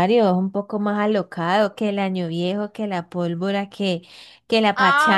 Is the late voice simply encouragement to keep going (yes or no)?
no